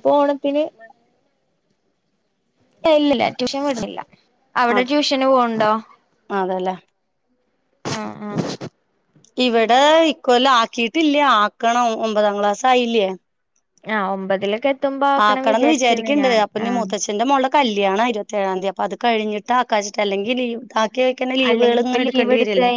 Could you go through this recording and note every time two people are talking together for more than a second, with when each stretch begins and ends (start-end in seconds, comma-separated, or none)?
none